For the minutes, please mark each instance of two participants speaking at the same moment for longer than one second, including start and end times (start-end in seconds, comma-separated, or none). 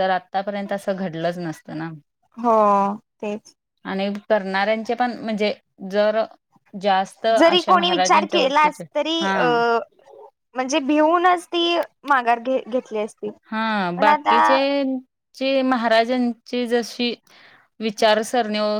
7.4-8.8